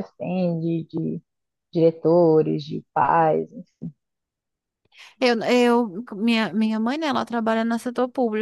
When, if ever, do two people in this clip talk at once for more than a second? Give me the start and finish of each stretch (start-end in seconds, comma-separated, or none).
none